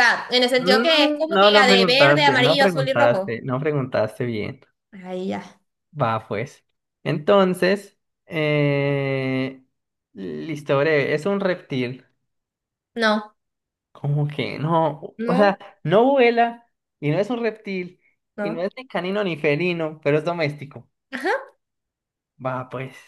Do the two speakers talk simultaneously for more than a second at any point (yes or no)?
yes